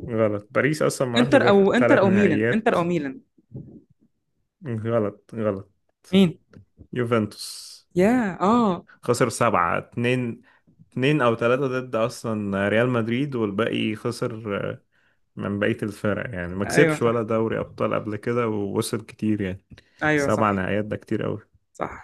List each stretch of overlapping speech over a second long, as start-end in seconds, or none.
1.2-2.8